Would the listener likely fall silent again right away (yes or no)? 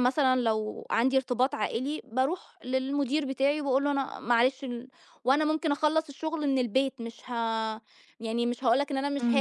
no